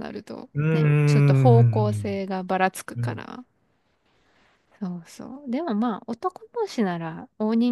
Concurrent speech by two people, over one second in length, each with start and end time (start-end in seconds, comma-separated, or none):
0.5-2.1